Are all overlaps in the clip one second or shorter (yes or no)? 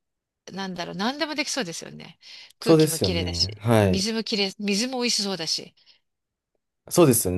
no